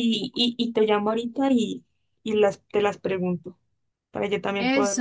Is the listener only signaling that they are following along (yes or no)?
no